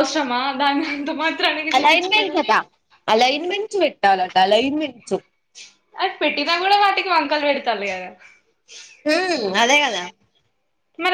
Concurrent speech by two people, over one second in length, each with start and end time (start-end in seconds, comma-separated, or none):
none